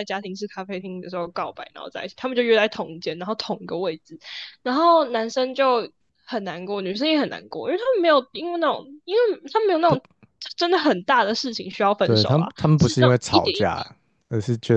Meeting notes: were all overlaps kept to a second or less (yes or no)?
no